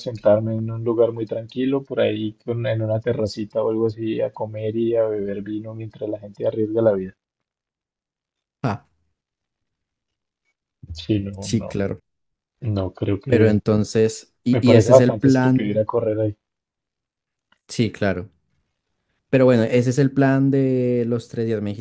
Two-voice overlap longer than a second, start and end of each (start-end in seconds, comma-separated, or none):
14.5-15.8